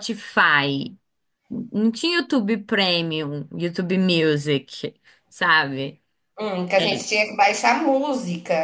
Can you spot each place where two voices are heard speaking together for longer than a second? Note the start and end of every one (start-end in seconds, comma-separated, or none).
none